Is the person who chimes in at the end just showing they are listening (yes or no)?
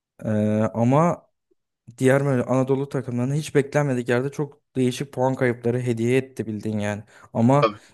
yes